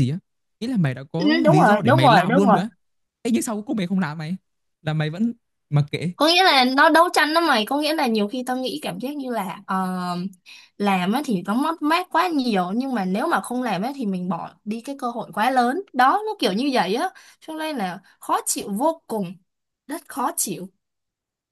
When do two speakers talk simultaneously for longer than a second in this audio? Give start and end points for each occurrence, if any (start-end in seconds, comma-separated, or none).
1.2-2.6